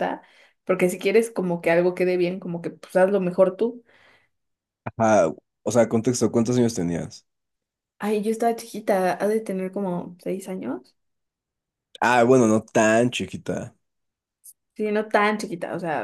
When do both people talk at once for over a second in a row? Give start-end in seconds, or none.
none